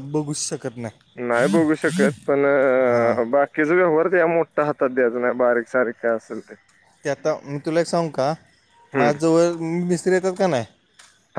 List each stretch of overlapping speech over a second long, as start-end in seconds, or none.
none